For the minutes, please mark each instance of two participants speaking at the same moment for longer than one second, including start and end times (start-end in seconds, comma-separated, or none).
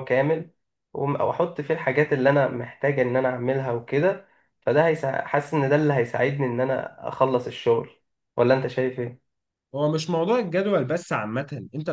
none